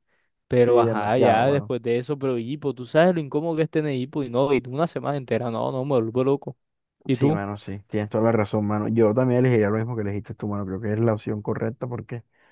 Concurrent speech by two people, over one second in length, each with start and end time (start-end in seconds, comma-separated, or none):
0.5-1.7